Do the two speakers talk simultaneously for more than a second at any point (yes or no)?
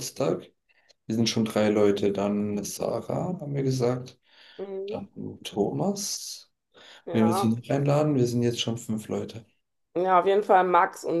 no